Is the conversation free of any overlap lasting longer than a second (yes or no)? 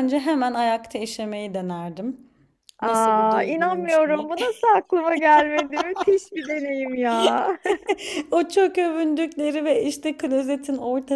no